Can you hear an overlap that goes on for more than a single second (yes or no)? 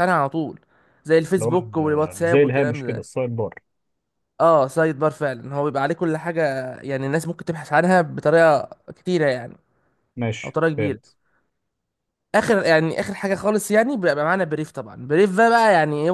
yes